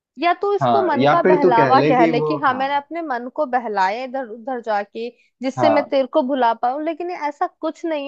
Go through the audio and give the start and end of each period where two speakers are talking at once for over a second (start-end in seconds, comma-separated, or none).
0.6-2.6